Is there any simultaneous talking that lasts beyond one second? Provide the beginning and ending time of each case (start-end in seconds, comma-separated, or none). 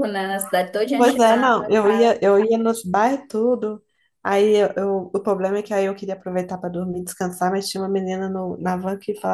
1.0-2.2